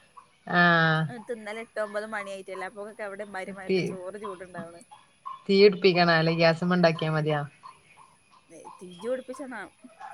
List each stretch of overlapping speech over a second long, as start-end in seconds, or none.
none